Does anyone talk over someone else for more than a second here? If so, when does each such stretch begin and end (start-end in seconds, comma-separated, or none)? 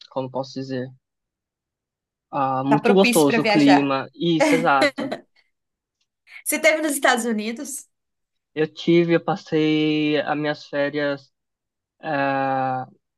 2.7-4.0